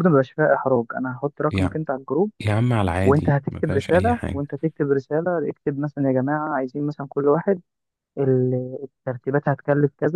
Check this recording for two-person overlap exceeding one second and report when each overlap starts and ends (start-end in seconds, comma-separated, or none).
3.0-4.4